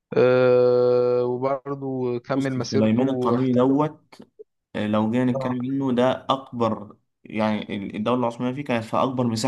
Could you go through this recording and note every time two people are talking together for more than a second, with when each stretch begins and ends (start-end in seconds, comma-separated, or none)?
2.4-3.8